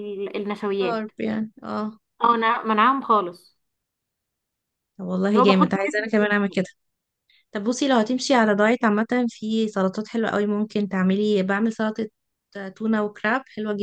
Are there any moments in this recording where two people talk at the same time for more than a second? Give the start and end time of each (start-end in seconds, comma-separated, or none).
5.3-6.6